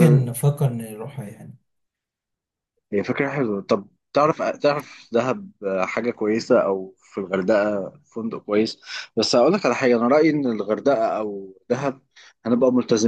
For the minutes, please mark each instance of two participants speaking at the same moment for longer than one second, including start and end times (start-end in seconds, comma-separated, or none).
none